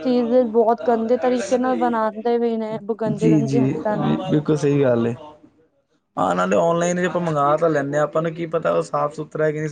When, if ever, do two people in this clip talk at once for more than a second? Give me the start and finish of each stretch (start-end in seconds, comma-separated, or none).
none